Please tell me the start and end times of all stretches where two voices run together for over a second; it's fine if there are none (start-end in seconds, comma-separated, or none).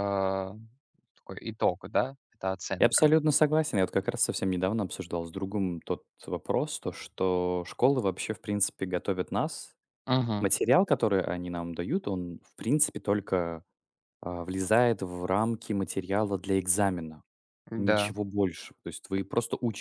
none